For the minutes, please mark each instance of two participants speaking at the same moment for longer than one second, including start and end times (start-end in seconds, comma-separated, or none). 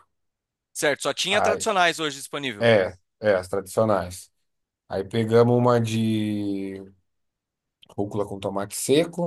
none